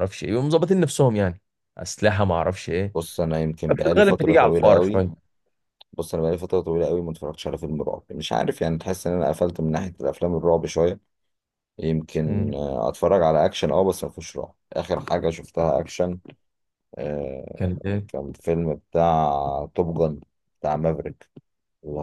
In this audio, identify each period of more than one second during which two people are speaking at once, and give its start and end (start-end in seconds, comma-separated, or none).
3.8-5.0